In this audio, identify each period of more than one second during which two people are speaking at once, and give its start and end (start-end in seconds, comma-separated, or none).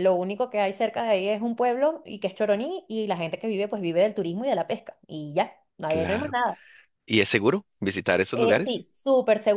none